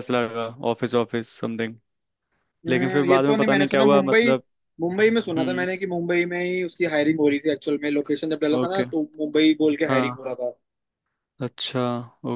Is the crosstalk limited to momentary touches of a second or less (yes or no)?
no